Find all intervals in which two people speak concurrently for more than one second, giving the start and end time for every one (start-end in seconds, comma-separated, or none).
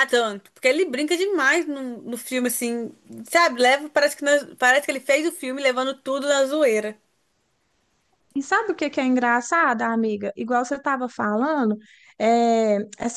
none